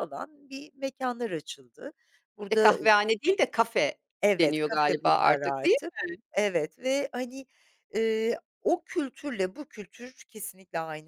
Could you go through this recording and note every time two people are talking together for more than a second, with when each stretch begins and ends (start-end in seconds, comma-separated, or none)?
4.3-5.9